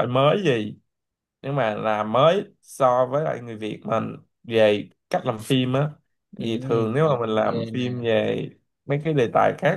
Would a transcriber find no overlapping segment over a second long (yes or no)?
no